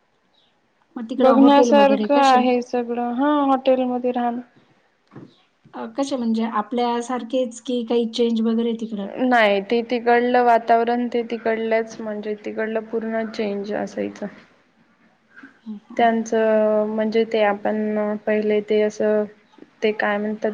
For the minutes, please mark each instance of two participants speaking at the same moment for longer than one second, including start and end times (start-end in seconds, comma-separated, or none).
1.2-2.4